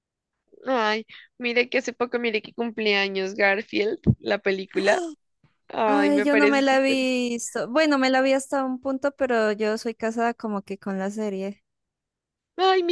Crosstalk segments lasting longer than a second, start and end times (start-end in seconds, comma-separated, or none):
5.9-7.1